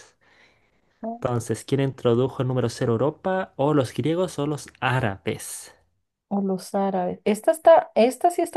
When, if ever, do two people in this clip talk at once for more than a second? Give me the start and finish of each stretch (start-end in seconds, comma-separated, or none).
none